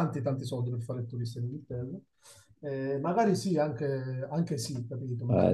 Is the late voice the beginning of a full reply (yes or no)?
no